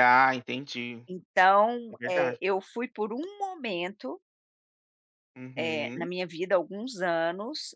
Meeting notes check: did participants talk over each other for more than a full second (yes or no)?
no